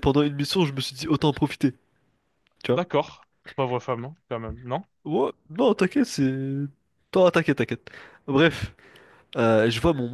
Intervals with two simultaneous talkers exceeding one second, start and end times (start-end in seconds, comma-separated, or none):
none